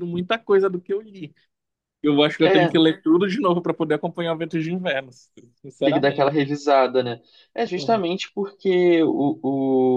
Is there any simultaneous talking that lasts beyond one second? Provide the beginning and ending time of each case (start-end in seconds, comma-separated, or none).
none